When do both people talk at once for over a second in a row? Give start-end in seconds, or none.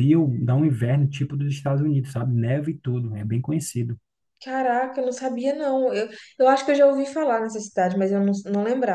none